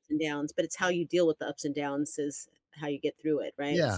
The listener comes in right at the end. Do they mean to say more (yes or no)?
yes